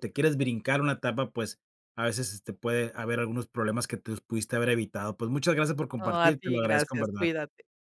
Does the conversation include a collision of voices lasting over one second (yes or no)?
yes